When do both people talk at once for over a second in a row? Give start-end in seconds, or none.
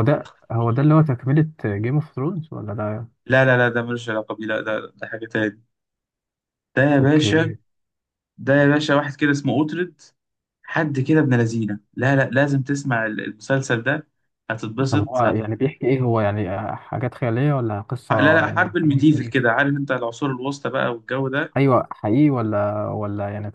18.1-19.5